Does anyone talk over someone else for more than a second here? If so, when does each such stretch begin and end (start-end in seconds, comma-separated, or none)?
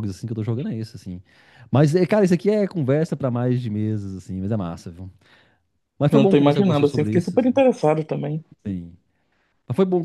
6.1-7.6